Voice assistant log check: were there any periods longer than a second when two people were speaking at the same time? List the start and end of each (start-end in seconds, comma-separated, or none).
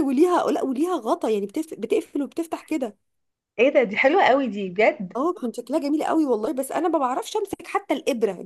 none